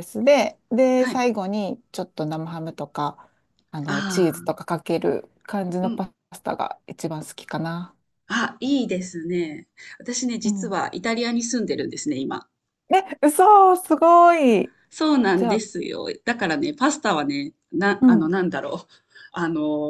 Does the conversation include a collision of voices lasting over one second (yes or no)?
no